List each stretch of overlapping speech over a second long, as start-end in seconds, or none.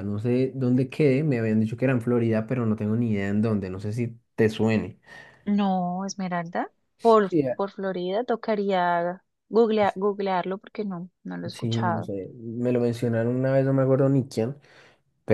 none